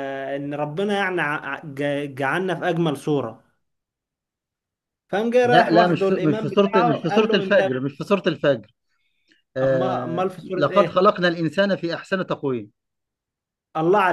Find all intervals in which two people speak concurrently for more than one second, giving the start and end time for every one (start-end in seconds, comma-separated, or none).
5.4-7.6, 9.6-11.0